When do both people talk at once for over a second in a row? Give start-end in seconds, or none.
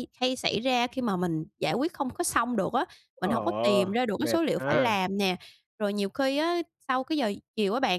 3.2-4.8